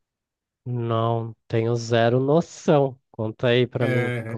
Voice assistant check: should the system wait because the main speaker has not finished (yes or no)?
no